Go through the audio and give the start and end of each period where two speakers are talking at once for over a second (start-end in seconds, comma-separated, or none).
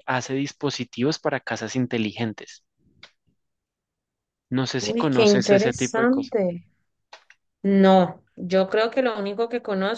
4.8-6.3